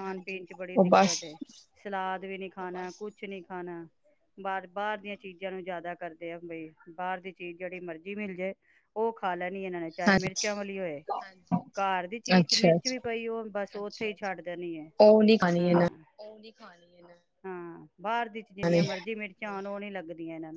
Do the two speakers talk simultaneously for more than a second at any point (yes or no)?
no